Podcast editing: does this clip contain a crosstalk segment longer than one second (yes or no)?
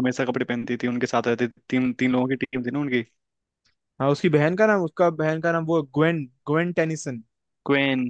no